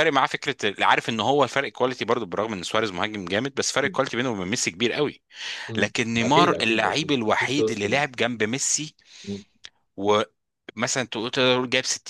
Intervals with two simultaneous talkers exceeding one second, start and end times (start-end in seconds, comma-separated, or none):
5.8-8.0